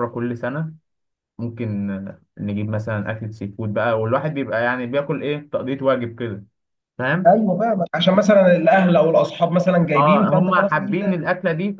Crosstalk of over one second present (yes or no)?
yes